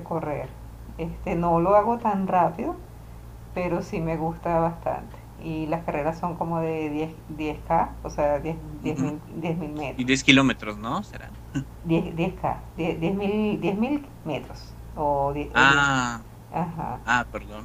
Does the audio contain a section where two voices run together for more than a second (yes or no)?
no